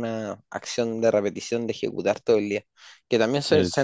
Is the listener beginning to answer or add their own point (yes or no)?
no